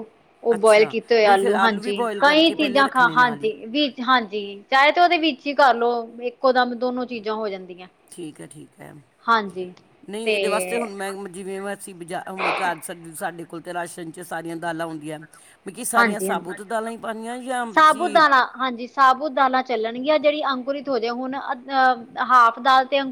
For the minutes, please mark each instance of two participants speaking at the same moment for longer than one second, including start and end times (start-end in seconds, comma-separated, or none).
0.5-3.5